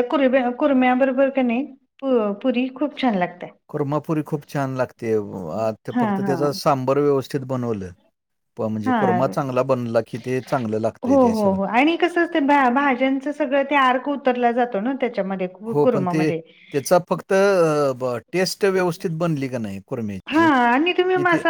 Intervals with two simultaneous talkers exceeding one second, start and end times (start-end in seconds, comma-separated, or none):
none